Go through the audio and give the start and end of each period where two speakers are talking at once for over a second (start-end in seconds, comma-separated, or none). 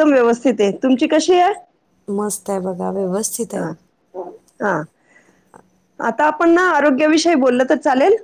none